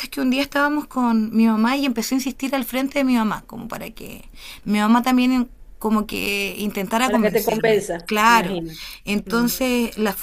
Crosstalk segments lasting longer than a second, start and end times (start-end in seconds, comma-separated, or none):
7.0-8.6